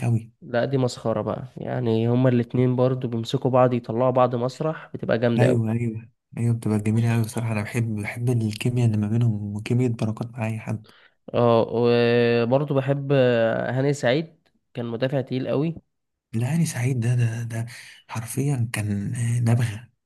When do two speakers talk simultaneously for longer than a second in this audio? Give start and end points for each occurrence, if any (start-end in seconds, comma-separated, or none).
none